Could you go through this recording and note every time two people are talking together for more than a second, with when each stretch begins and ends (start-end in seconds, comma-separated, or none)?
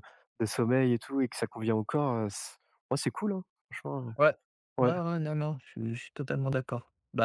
none